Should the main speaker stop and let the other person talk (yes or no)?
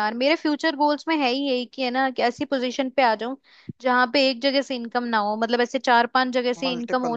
no